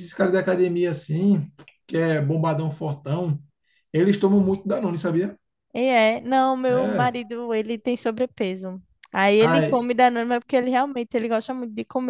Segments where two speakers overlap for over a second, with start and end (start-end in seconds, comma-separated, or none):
none